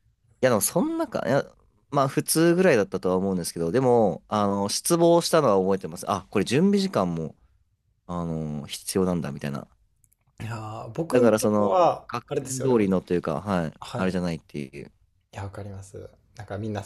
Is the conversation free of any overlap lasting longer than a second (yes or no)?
no